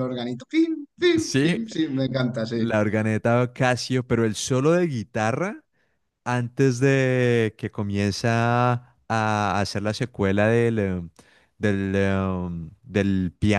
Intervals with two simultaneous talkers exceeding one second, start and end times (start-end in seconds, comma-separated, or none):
none